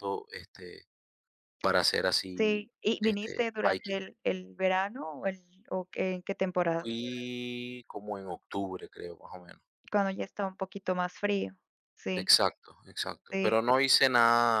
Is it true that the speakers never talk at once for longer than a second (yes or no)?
no